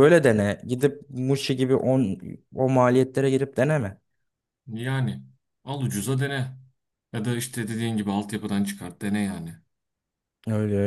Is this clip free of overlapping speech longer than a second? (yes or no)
yes